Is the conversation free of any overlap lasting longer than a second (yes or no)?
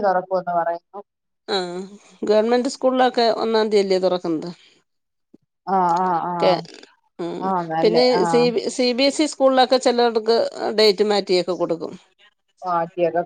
yes